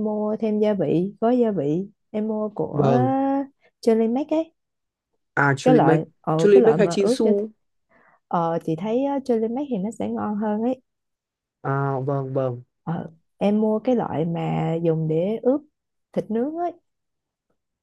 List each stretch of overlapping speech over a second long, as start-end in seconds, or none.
5.6-7.3